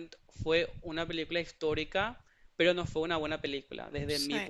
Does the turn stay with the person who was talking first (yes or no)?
yes